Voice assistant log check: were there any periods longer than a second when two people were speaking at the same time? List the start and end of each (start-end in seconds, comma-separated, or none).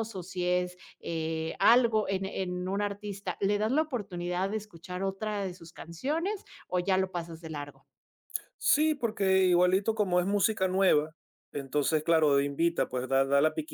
none